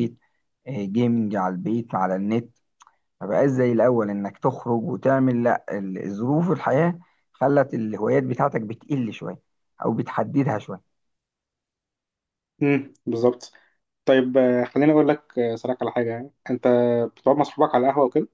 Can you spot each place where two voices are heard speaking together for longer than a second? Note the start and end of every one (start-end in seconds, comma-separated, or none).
none